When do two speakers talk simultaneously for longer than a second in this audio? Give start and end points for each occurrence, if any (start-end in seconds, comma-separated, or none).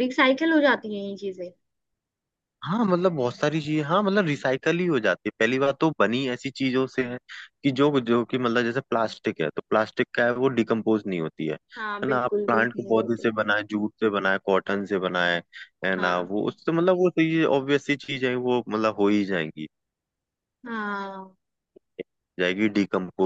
11.8-13.3